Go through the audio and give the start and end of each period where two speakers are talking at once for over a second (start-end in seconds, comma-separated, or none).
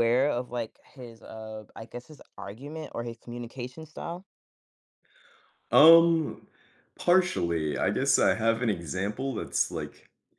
none